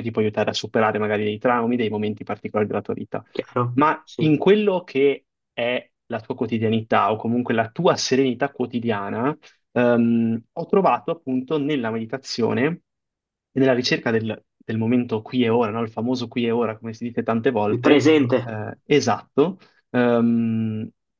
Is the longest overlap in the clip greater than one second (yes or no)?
no